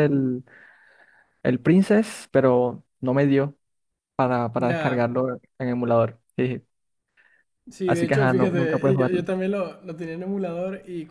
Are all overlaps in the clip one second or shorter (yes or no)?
no